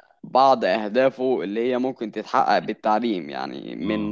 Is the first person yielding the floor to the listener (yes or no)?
no